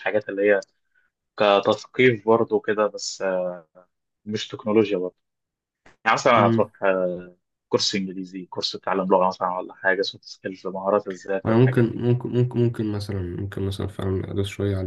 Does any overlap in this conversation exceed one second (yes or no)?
no